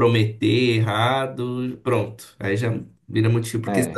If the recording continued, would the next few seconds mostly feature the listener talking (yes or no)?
yes